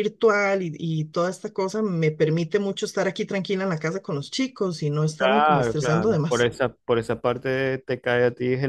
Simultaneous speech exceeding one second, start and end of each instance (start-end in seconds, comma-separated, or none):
5.2-6.5